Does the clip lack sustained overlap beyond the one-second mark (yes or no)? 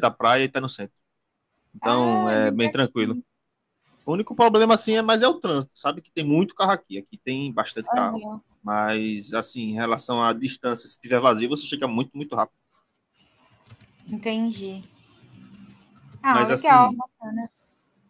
no